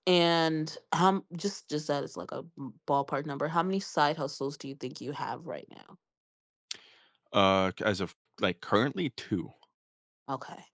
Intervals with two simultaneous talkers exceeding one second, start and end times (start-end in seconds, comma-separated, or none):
none